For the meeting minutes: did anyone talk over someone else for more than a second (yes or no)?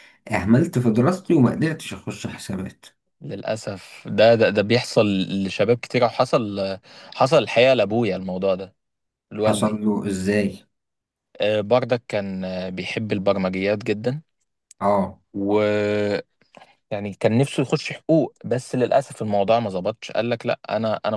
no